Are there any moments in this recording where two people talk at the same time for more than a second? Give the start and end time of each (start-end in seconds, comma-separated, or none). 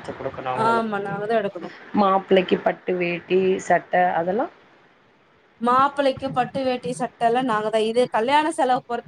none